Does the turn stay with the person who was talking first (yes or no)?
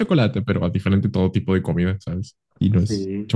no